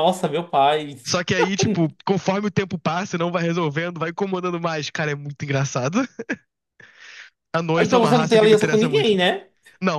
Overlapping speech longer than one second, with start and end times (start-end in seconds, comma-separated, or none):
7.8-9.2